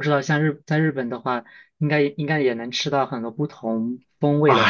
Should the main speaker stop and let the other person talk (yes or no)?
yes